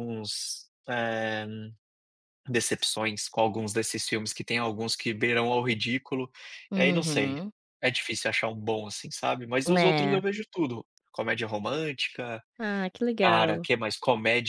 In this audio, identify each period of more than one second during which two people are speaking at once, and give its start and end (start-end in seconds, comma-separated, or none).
none